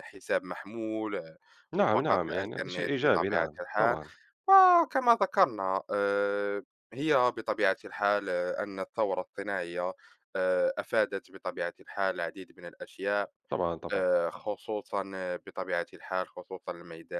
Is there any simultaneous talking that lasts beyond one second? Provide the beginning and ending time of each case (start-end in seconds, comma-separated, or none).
1.7-4.0